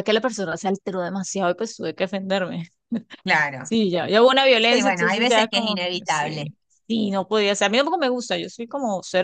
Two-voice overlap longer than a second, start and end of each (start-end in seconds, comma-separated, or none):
4.6-6.5